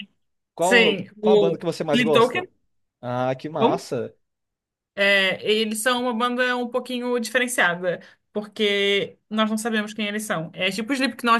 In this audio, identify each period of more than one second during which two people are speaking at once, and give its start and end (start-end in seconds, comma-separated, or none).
0.6-2.1